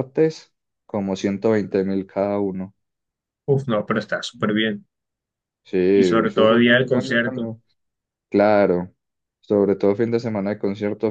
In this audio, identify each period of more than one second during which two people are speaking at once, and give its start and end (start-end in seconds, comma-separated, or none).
5.9-7.5